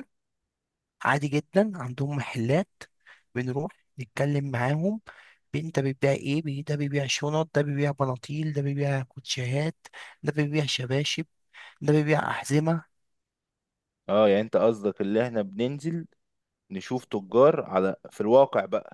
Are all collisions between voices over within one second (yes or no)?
yes